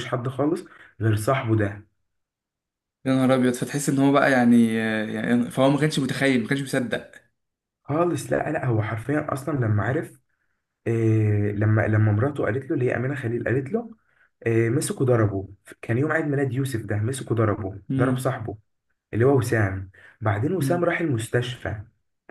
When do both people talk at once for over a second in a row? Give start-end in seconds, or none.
none